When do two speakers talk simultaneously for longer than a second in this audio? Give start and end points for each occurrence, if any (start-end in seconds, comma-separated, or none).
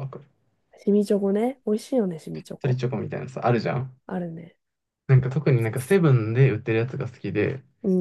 none